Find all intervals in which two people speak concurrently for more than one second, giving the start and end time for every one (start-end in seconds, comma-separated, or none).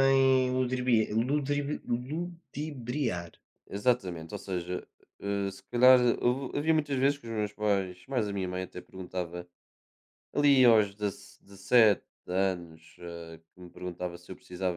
none